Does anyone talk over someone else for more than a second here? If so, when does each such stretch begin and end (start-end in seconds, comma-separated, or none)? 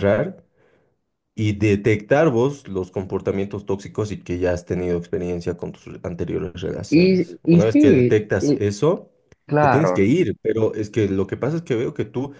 6.9-8.6